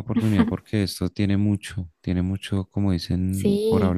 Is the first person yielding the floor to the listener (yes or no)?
yes